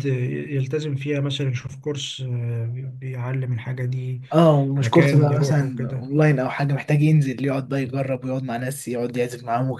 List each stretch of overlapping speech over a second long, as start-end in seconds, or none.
4.8-6.1